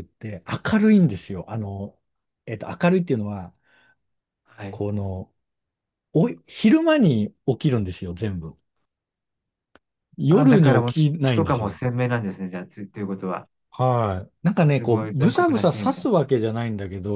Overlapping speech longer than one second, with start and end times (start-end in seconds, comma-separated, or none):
10.3-11.8, 14.8-16.1